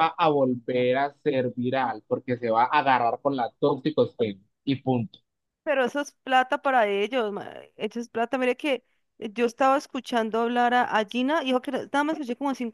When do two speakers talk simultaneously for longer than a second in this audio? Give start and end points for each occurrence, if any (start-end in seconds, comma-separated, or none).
none